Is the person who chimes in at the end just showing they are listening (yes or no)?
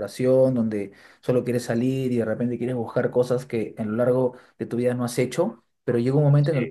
yes